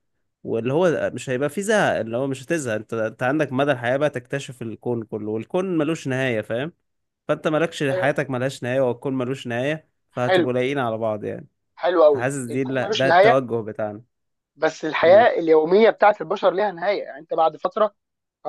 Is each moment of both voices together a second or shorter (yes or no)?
no